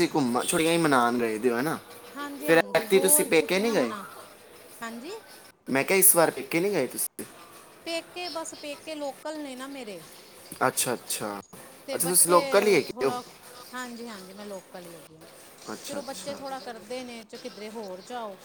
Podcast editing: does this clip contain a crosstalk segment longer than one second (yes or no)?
no